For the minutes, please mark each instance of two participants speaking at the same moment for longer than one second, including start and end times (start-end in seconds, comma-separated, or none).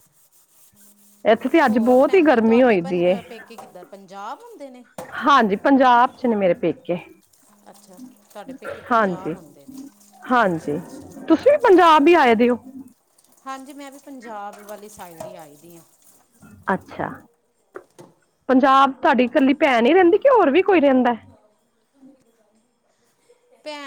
1.7-3.1